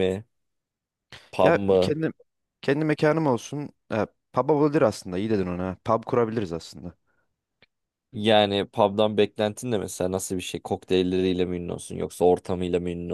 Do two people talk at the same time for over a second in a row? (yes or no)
no